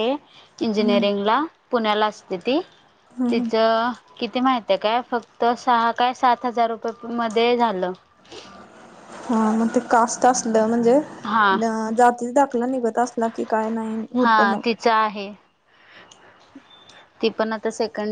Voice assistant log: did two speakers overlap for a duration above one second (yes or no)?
no